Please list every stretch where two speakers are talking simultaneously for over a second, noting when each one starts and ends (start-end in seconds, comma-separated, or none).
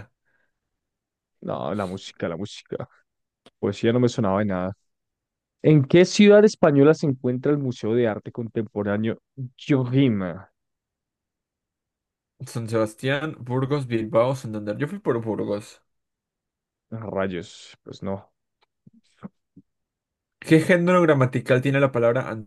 none